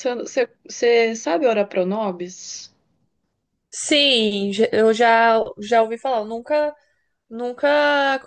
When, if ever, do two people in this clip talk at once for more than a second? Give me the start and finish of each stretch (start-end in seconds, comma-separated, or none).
none